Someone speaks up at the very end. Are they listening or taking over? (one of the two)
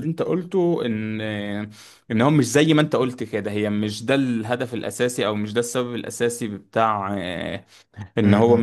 listening